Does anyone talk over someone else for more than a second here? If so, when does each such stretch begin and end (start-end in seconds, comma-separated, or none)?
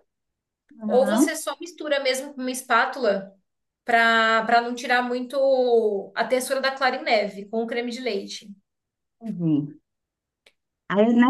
none